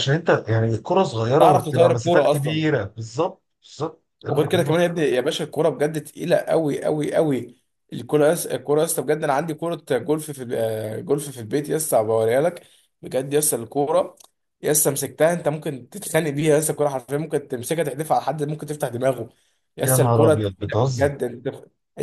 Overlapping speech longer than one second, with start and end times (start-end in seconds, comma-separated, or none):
1.4-2.6, 19.8-21.1